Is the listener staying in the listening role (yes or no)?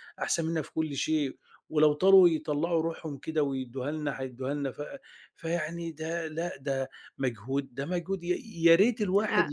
yes